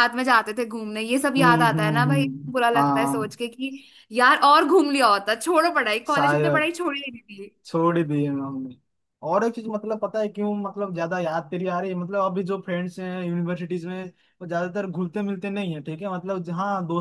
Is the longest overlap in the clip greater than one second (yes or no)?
yes